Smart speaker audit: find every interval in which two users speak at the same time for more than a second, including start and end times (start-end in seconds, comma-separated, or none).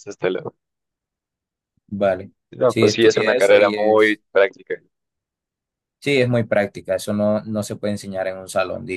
2.7-4.2